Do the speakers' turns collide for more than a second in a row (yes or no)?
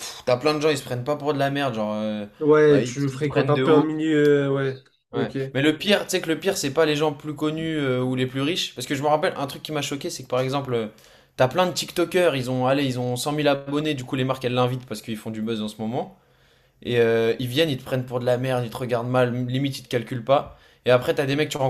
yes